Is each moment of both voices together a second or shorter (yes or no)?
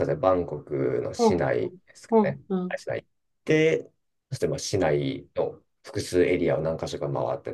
no